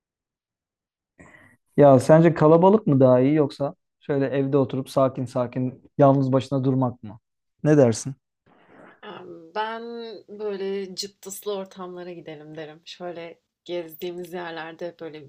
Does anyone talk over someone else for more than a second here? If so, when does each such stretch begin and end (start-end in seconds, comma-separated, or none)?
none